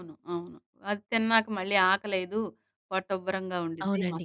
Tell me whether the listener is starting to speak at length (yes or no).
yes